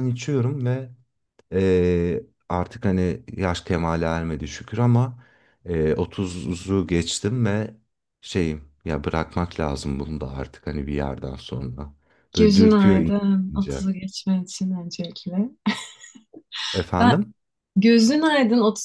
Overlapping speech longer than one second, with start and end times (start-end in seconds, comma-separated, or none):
12.4-13.8